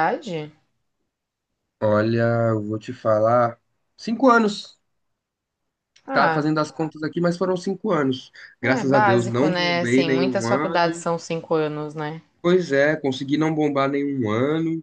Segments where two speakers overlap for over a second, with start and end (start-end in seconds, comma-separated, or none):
8.6-11.1